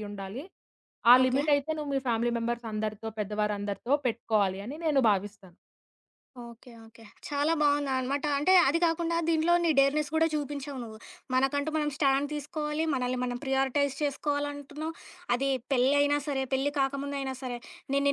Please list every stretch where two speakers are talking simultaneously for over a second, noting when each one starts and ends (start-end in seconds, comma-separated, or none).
none